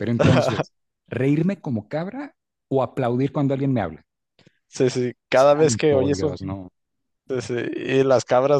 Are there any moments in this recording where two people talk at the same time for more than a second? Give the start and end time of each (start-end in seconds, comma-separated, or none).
5.3-6.6